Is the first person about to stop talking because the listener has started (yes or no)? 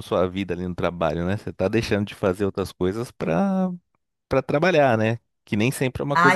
yes